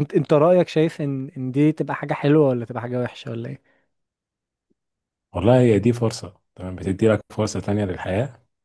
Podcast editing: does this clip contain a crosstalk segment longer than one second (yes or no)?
no